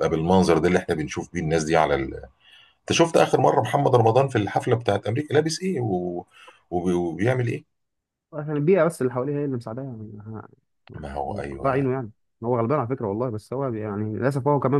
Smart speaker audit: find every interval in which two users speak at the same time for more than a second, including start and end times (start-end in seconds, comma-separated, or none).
none